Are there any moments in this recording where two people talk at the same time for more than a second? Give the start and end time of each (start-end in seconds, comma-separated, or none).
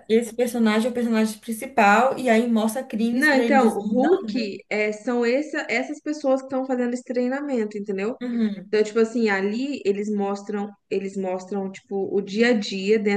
3.1-4.4